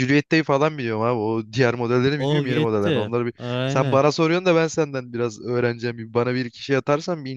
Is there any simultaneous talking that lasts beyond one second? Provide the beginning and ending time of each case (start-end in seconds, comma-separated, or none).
2.2-4.0